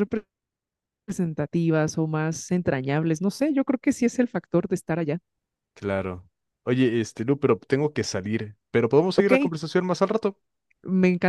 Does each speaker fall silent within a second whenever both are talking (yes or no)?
yes